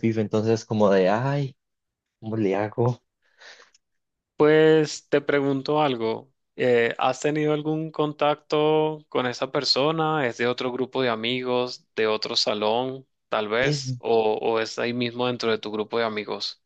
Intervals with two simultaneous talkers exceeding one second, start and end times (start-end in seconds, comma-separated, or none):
none